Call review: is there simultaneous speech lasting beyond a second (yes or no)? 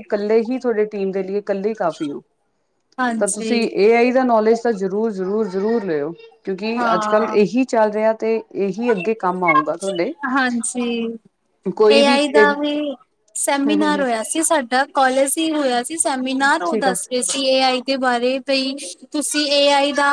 no